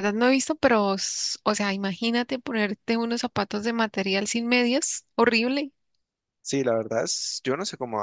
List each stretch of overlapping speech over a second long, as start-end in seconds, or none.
none